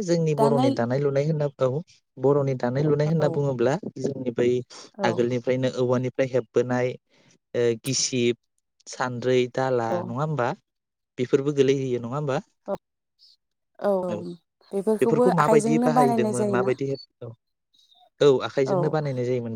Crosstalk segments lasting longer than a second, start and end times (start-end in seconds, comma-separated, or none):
15.0-16.7